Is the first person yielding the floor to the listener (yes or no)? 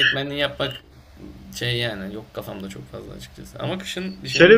yes